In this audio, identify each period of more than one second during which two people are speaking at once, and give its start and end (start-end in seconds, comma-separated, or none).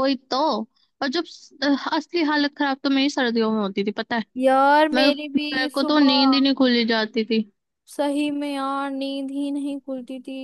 4.9-6.5